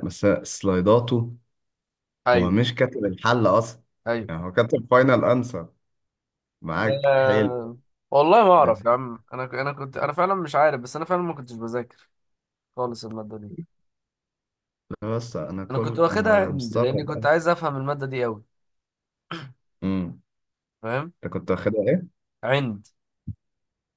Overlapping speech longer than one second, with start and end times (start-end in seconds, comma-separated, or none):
15.7-17.3